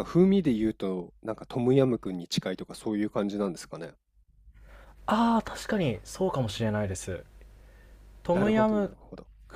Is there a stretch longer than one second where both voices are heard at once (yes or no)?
no